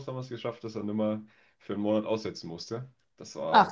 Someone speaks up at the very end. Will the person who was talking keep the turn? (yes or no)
no